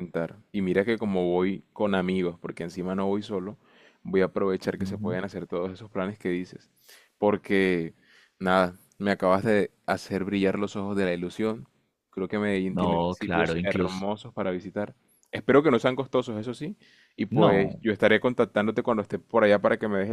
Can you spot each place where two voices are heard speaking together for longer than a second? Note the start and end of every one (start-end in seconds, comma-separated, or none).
12.7-14.1